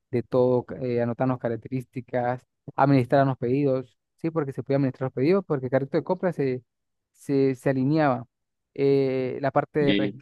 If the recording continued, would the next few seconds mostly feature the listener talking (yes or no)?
no